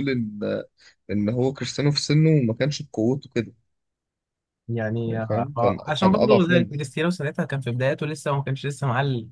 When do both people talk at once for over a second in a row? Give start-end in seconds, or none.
5.1-6.7